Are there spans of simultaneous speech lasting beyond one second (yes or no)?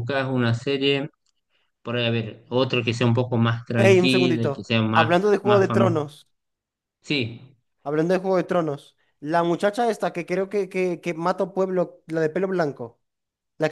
yes